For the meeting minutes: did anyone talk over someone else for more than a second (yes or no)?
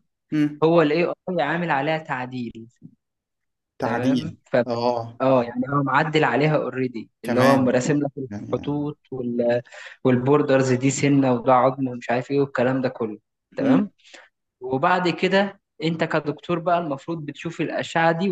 no